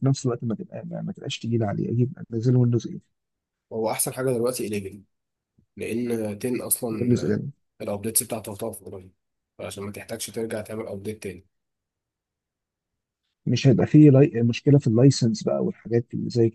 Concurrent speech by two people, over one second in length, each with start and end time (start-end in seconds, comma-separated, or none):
none